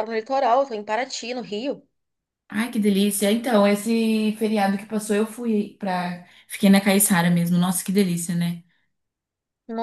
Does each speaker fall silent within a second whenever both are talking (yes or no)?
yes